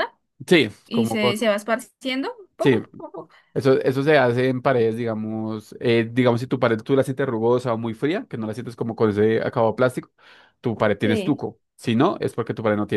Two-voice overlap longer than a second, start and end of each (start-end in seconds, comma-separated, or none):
none